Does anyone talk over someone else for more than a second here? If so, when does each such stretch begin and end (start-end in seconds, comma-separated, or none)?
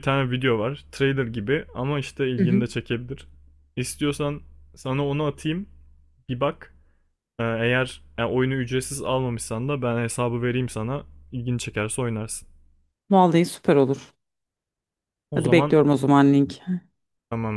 none